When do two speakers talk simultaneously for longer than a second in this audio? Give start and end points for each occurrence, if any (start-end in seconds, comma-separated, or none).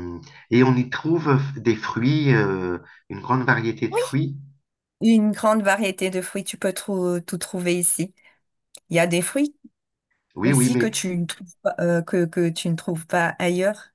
none